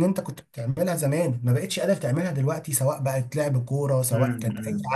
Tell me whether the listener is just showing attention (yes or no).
no